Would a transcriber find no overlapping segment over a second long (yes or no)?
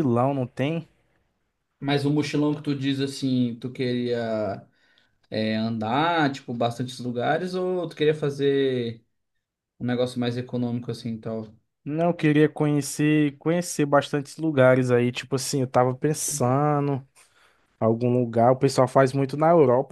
yes